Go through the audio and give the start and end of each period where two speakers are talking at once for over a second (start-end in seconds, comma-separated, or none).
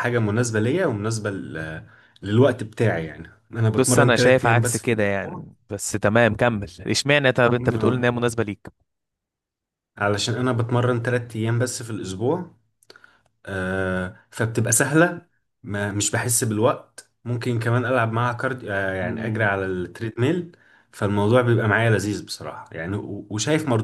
3.8-5.5